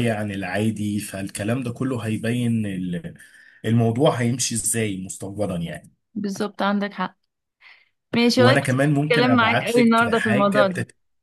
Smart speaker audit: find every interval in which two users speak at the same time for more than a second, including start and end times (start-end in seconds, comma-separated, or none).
8.4-10.7